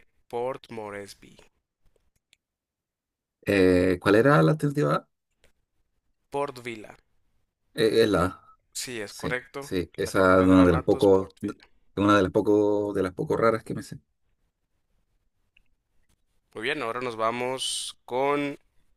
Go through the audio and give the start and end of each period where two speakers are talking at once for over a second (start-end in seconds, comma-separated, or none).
9.1-11.3